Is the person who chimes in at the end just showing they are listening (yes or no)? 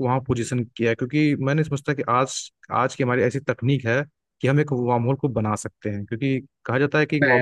yes